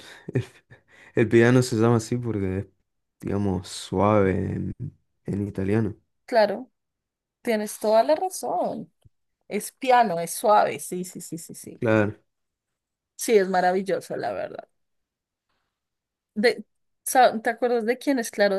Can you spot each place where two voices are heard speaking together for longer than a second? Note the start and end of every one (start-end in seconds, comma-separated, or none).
none